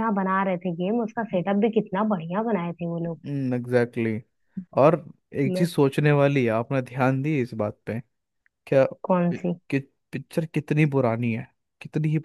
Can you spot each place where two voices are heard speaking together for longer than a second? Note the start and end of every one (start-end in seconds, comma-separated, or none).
none